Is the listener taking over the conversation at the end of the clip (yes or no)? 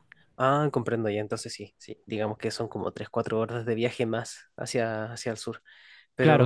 yes